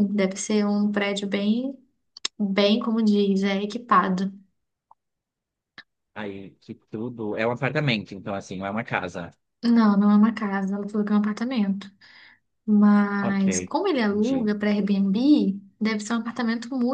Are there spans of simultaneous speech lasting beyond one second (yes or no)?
no